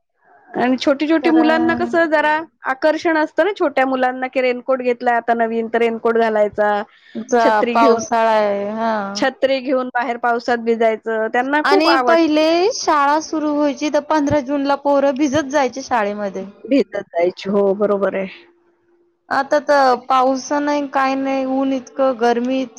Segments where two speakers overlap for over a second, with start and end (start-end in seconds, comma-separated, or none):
none